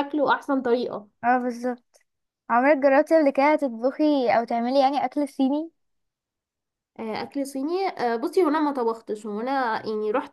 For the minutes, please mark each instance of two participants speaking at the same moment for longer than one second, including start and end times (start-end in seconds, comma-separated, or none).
none